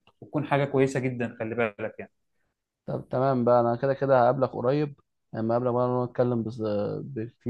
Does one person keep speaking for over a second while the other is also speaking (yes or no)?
no